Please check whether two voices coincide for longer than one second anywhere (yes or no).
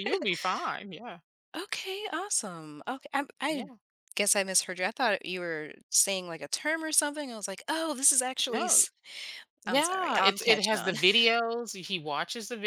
yes